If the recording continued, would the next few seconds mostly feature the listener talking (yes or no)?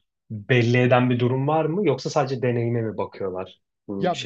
yes